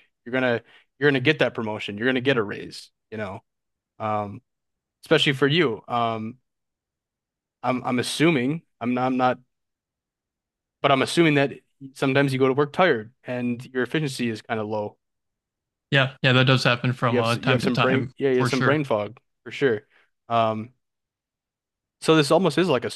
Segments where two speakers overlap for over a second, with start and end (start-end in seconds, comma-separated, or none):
17.1-18.8